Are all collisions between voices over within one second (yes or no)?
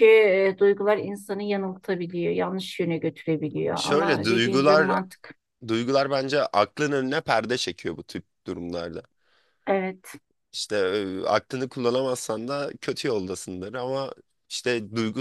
no